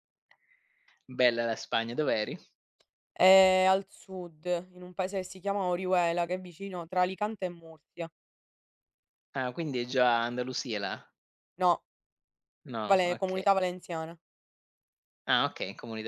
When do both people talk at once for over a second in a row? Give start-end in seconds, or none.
none